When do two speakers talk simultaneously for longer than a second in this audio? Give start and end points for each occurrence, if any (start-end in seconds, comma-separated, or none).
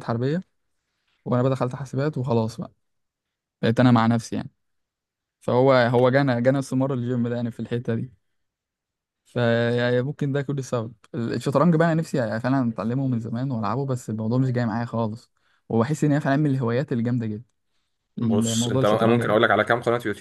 18.2-19.4